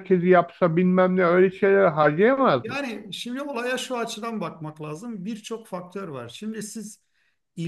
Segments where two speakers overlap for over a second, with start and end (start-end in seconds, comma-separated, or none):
none